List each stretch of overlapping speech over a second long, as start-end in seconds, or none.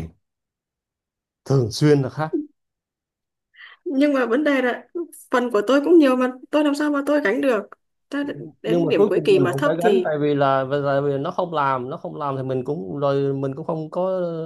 8.7-10.1